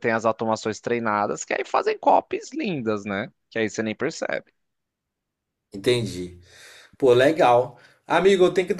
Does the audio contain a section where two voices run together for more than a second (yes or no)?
no